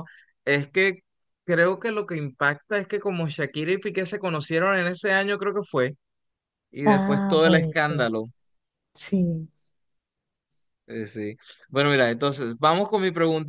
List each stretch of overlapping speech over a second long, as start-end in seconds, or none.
6.9-8.1